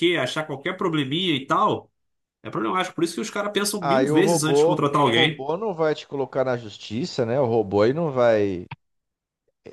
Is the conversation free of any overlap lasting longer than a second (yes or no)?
no